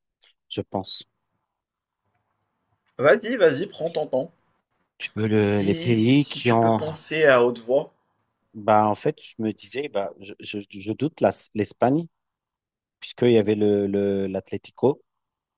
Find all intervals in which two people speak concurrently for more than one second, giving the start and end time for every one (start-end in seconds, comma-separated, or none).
5.4-6.8